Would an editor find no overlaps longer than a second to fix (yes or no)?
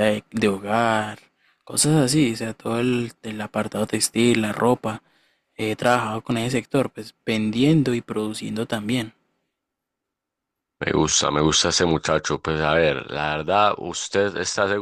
yes